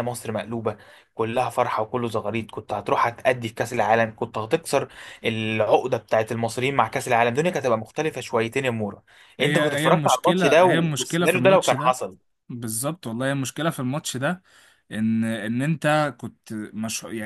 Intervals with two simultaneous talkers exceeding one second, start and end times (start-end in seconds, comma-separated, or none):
9.4-12.0